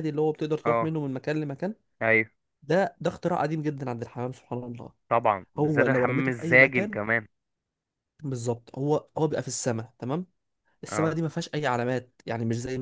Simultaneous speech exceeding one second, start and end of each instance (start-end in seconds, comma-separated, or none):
5.6-7.0